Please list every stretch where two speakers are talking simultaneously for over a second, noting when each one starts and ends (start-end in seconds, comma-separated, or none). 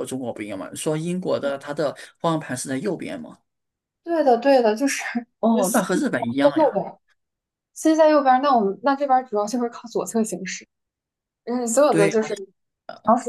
5.5-6.8